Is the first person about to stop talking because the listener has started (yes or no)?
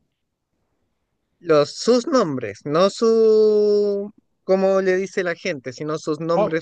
yes